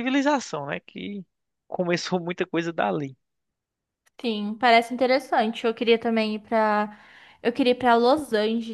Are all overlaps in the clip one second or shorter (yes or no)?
yes